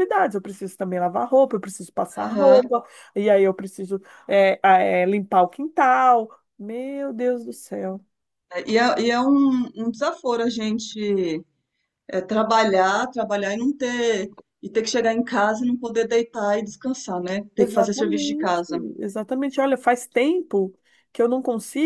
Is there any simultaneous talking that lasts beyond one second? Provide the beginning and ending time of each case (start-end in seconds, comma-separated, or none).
17.6-18.8